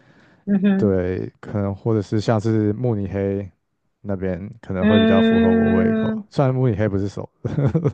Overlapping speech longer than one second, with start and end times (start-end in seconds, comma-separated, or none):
4.8-6.2